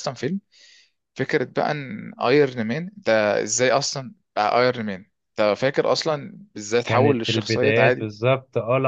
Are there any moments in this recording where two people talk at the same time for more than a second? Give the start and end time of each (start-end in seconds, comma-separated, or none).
6.8-8.1